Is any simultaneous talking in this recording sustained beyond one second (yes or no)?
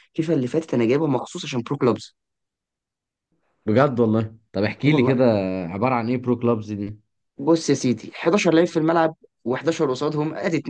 no